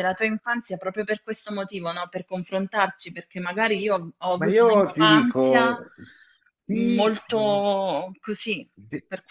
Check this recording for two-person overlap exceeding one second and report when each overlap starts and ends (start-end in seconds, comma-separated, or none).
4.3-5.8